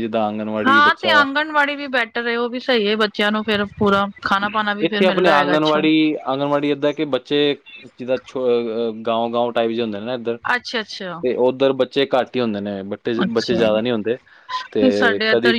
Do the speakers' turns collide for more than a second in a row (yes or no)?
no